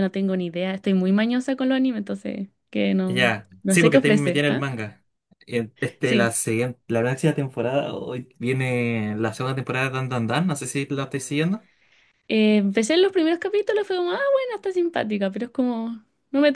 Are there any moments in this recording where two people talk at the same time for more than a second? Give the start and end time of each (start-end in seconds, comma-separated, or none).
3.1-4.7